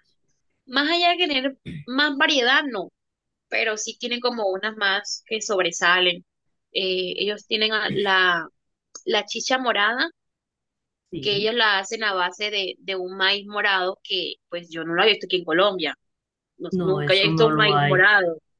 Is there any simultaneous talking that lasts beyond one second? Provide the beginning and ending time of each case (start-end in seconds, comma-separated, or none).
16.7-18.1